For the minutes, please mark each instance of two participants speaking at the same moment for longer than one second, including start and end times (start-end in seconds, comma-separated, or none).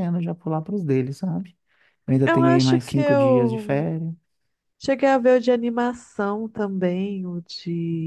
2.2-3.9